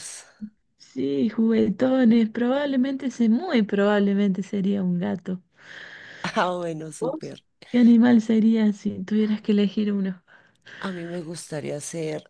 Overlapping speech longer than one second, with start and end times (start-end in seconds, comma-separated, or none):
none